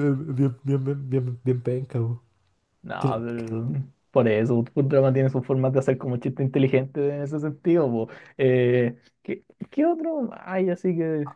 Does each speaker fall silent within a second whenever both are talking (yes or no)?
yes